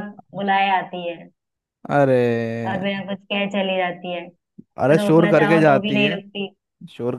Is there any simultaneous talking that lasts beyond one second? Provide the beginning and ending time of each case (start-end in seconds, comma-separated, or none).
4.8-6.2